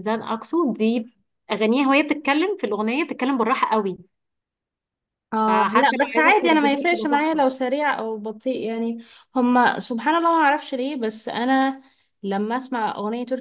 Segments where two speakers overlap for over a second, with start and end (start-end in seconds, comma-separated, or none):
5.5-7.4